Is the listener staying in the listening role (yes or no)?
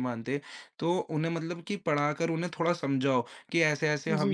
yes